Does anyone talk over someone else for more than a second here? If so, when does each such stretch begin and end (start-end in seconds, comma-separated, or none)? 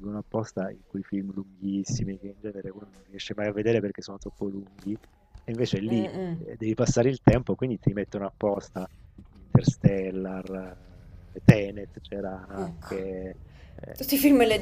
none